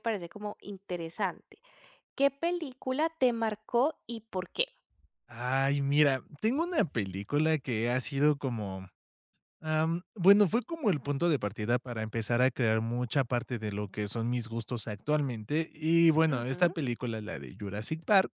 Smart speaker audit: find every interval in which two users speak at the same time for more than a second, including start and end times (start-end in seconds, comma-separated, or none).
none